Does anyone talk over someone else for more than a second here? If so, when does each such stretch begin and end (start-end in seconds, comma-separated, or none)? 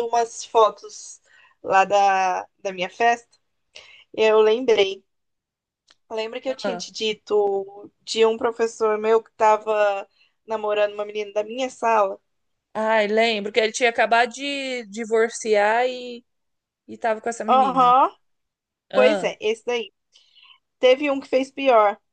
none